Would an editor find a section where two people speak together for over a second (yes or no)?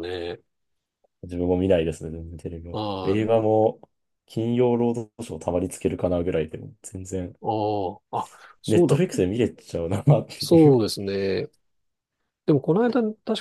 no